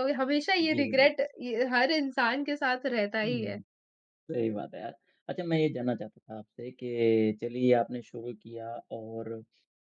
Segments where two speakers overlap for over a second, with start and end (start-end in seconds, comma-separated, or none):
none